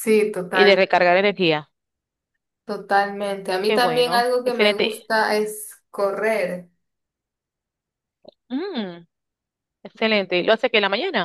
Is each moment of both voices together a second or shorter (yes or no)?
no